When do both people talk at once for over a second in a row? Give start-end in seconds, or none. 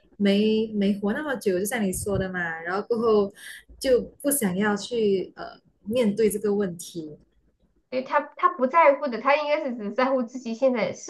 none